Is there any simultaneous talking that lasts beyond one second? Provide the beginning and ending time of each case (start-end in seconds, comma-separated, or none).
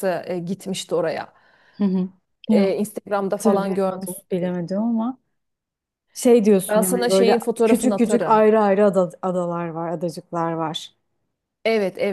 3.3-4.5, 6.7-8.4